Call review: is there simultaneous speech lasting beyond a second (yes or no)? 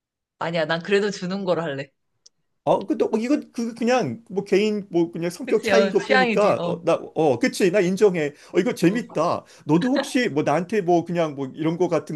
yes